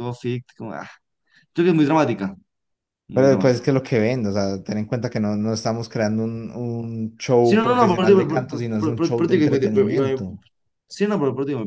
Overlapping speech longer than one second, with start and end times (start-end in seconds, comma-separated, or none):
7.4-10.2